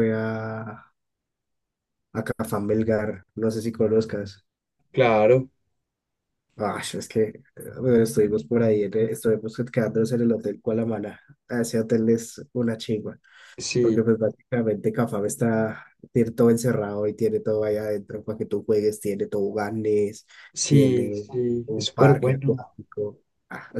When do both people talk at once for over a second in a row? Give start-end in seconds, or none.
20.6-22.6